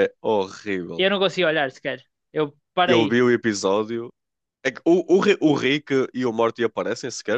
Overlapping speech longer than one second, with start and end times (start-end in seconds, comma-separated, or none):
none